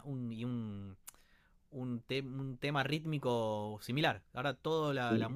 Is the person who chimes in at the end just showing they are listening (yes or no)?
yes